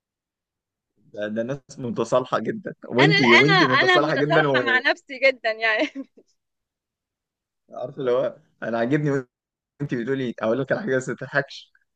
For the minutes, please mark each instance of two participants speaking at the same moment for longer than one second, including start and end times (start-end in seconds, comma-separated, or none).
3.0-4.8